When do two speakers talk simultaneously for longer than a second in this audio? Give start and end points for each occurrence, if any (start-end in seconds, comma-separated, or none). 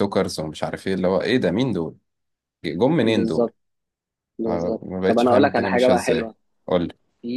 4.5-6.3